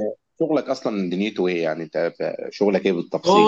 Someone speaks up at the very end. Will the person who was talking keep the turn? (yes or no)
no